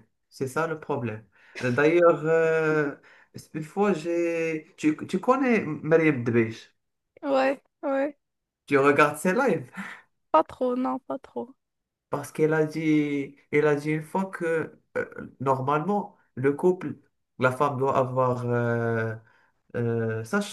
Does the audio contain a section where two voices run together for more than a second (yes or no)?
no